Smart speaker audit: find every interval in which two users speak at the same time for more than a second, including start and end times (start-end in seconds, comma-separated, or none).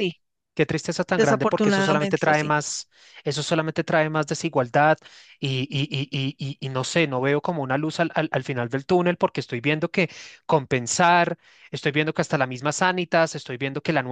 1.1-2.5